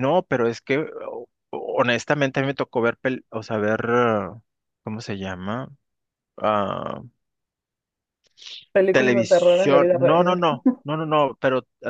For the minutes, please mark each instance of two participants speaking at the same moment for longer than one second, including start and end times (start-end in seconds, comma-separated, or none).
8.9-10.5